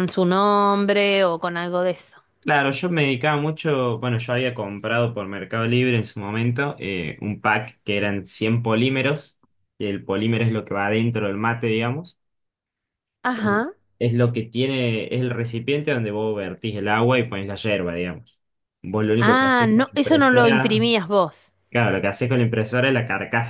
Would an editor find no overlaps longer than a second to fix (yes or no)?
no